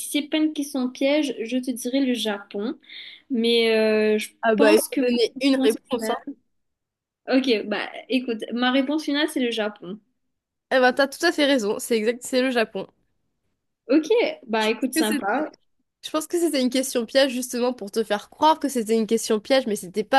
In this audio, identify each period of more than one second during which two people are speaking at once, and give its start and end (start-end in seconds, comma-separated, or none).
4.4-6.2